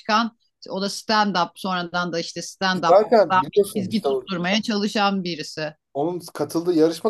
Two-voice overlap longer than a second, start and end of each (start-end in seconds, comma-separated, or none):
2.9-4.2